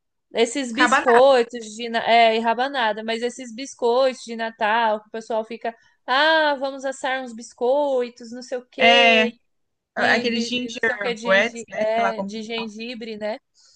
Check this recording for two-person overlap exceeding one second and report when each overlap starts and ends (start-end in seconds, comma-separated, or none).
9.9-12.7